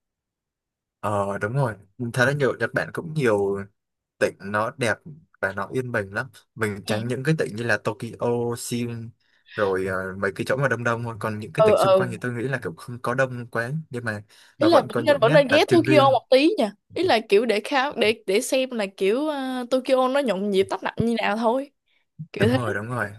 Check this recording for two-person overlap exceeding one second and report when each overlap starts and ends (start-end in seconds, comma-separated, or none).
14.6-16.2